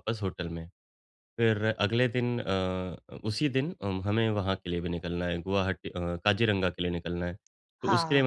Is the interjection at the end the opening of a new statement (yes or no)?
no